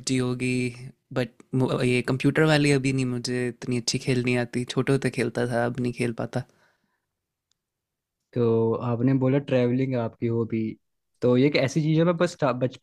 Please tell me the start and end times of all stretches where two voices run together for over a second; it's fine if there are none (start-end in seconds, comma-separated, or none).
none